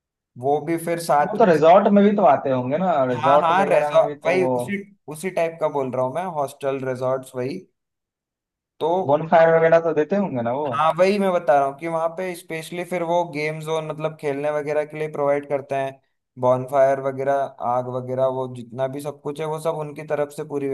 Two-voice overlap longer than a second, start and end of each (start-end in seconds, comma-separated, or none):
3.1-4.6